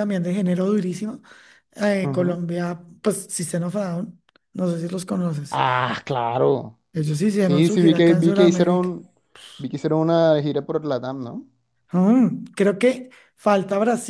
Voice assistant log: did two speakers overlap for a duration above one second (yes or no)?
yes